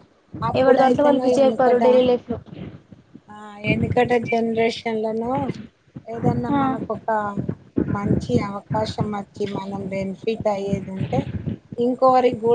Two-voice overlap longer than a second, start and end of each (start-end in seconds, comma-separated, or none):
0.6-2.0